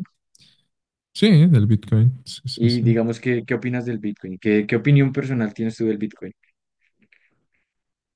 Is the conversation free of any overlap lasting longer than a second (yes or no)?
yes